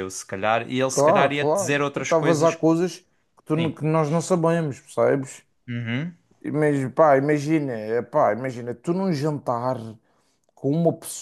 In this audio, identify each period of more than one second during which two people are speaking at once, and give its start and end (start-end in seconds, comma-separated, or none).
0.9-2.6